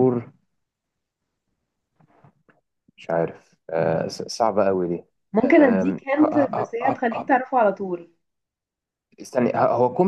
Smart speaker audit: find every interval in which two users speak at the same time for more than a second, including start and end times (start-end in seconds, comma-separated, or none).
5.4-7.3